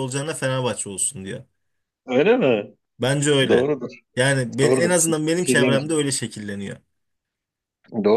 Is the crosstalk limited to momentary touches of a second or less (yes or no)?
no